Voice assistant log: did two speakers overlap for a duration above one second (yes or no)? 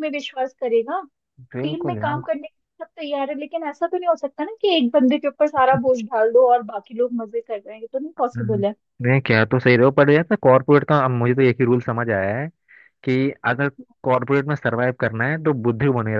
no